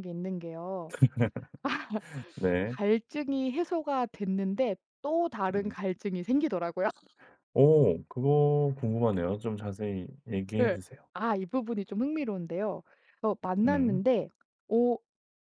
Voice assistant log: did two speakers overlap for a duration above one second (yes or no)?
no